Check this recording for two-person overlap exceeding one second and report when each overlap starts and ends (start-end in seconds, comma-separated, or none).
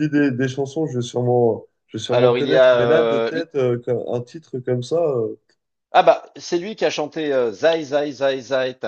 2.1-3.4